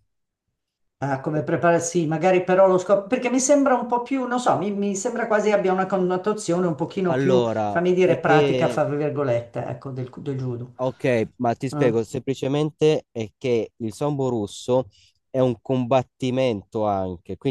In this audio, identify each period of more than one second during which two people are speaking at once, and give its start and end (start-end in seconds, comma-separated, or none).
7.0-8.8